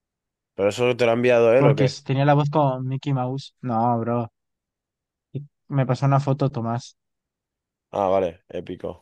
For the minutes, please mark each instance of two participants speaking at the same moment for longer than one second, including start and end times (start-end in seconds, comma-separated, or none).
none